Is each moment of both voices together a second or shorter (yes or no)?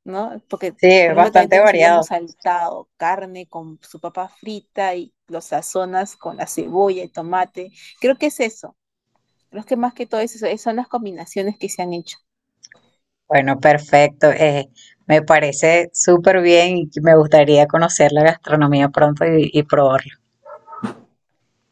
no